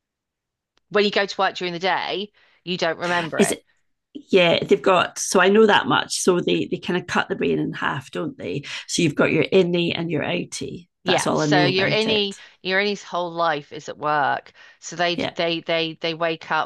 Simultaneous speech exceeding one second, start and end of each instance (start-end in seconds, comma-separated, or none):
11.0-12.2